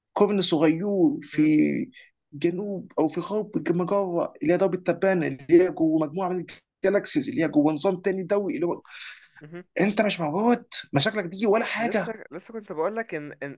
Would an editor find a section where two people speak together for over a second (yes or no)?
no